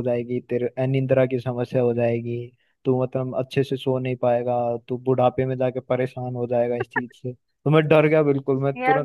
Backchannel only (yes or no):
yes